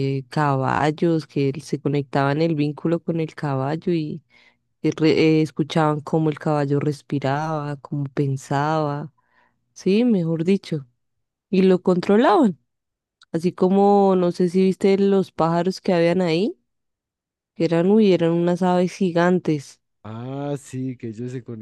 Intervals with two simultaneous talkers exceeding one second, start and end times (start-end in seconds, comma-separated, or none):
none